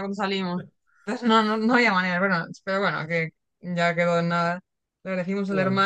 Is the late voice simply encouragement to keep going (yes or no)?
yes